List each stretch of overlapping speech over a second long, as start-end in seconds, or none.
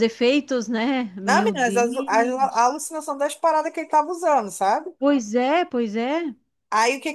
1.2-2.7